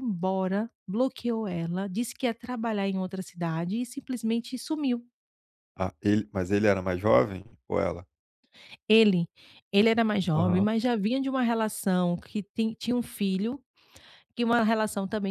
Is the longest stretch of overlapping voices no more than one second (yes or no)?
yes